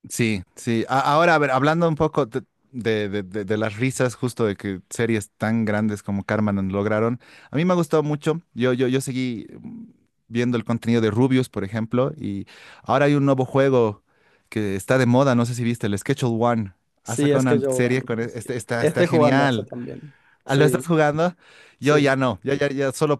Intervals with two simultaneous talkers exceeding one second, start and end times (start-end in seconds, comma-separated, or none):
17.0-19.7